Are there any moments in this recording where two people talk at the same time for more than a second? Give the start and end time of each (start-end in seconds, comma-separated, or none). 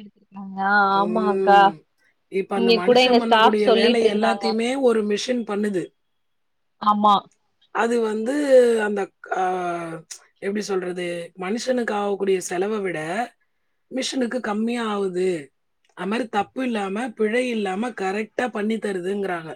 2.6-4.4